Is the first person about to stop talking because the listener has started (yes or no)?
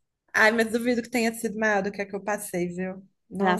yes